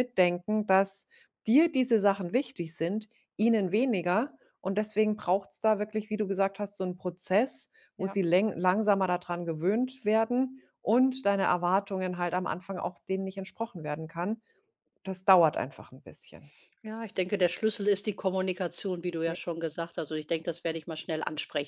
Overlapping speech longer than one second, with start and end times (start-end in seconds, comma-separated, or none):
none